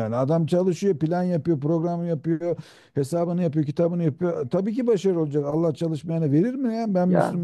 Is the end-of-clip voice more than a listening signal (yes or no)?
no